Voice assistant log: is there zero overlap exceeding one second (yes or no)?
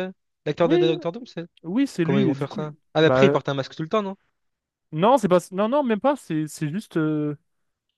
no